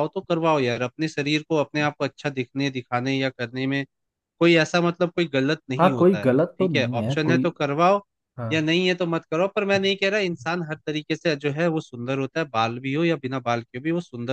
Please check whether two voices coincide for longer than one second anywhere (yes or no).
yes